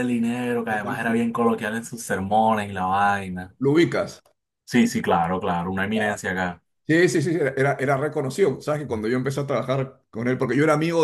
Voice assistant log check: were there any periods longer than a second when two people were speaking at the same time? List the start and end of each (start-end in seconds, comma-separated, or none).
none